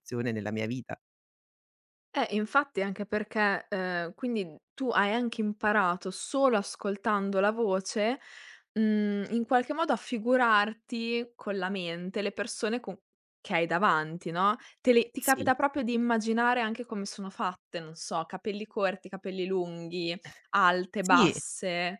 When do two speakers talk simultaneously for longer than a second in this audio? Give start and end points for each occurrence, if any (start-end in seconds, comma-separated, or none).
none